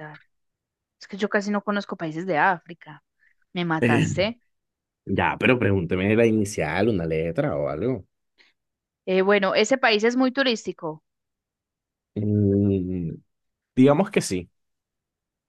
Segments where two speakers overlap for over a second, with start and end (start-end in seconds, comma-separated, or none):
none